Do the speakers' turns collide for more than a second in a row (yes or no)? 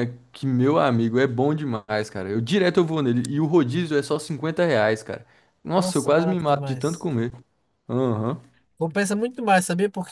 yes